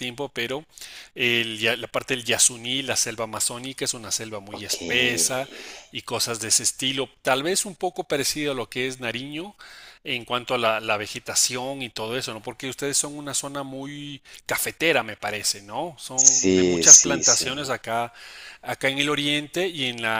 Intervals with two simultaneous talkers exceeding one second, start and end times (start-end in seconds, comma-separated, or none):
16.2-17.7